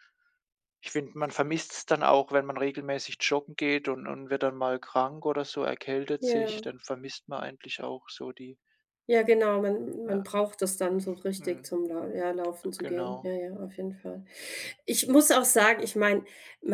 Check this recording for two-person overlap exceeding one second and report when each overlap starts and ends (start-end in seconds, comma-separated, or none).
none